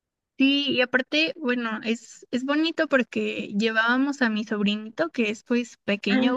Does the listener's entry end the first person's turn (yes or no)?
no